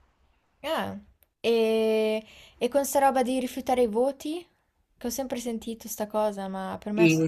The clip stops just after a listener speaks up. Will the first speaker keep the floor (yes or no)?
no